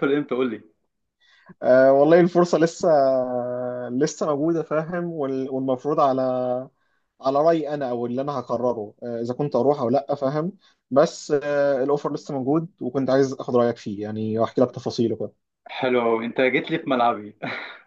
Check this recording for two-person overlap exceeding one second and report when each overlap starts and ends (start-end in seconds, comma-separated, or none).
none